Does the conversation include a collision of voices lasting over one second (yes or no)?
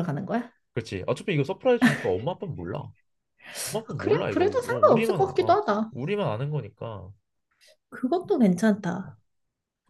yes